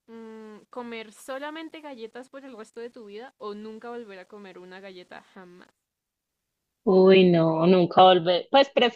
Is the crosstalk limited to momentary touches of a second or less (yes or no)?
yes